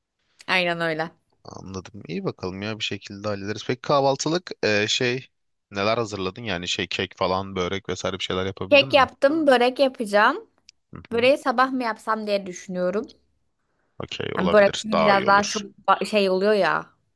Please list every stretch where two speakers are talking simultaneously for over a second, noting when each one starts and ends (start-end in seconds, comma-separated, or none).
14.3-15.6